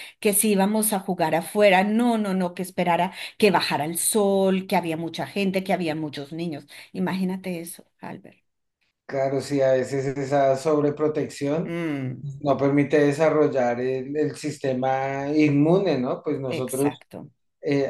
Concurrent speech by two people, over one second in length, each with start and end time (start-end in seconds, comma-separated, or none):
none